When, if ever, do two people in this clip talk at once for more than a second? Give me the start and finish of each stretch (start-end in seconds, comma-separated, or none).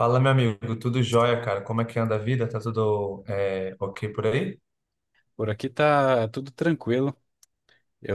none